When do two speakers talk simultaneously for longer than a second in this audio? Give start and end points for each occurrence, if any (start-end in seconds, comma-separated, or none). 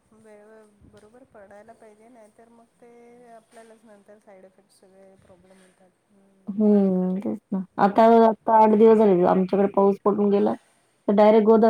none